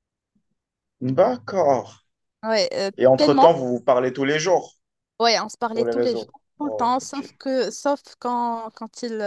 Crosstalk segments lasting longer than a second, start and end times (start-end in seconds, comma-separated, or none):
5.7-7.3